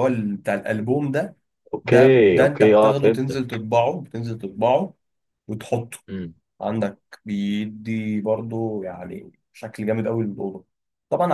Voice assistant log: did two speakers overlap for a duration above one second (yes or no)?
yes